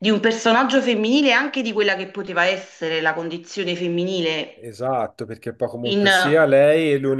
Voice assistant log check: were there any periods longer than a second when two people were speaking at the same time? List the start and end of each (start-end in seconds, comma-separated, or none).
none